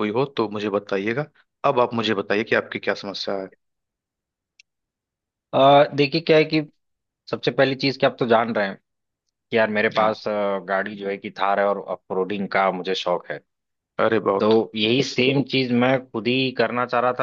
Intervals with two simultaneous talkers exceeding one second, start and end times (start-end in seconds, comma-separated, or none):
none